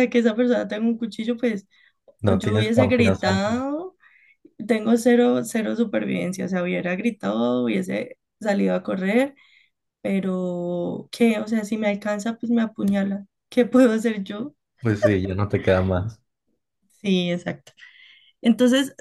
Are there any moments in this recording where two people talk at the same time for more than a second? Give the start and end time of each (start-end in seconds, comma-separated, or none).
2.2-3.6